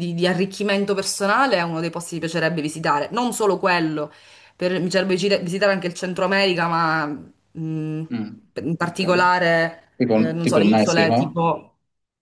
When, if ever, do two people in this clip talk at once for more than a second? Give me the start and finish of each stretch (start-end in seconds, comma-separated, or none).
10.0-11.4